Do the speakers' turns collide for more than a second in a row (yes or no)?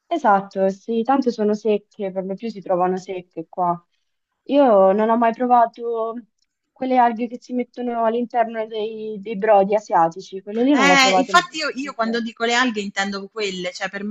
yes